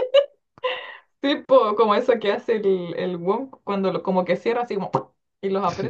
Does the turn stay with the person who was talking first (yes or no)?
no